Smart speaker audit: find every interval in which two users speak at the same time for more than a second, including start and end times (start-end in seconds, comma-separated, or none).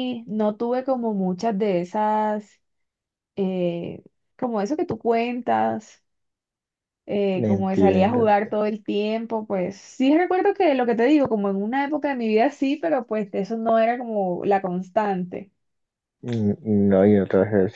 7.3-8.6